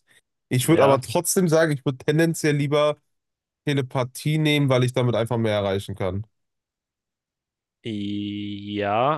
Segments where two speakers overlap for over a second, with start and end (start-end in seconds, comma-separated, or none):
none